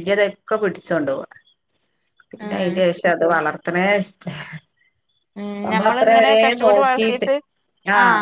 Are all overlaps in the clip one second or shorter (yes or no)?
no